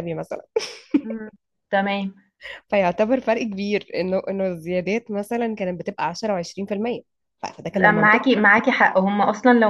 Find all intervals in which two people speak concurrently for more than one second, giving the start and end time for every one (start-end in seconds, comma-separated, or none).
none